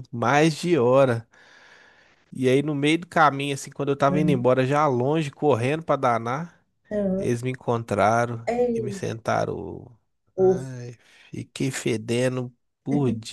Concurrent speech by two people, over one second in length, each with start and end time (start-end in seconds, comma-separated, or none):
none